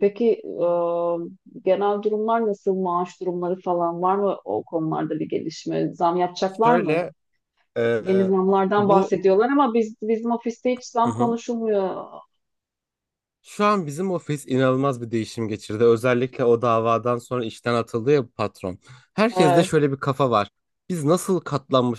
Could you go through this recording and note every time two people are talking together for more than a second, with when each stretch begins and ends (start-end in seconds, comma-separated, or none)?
none